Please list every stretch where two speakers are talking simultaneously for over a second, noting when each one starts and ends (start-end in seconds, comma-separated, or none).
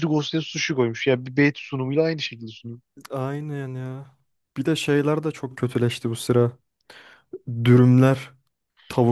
none